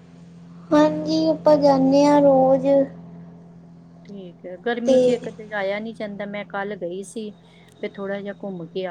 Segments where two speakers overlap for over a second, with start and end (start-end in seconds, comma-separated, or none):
none